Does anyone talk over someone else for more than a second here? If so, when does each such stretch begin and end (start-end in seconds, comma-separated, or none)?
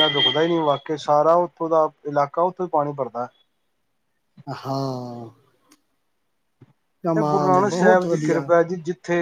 7.2-8.5